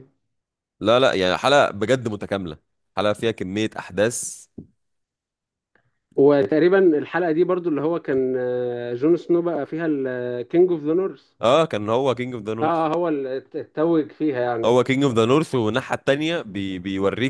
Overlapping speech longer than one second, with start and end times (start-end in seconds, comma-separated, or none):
none